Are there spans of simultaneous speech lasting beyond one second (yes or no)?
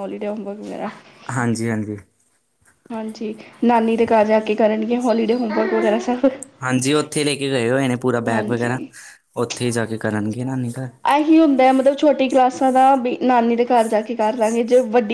no